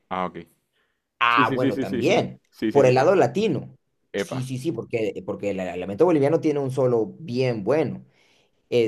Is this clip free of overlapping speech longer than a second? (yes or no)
no